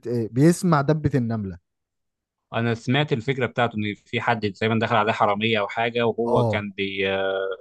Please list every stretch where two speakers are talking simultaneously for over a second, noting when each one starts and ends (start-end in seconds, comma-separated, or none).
none